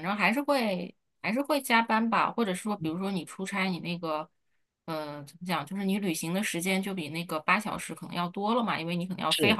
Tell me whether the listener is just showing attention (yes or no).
yes